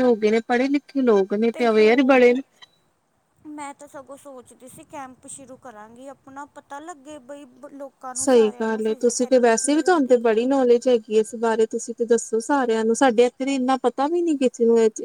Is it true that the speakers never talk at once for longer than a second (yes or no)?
no